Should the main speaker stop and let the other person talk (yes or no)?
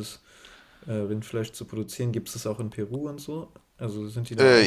yes